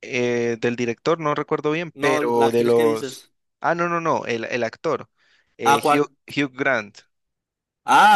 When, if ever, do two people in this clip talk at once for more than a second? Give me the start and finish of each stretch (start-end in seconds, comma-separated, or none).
2.0-3.3